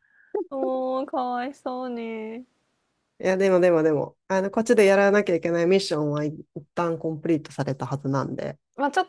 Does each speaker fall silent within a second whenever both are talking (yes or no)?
yes